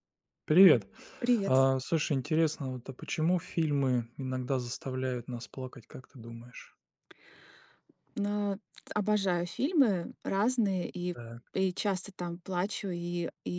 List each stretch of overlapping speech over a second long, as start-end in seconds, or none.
none